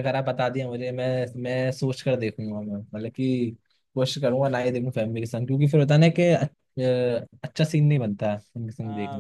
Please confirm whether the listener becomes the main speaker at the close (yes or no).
yes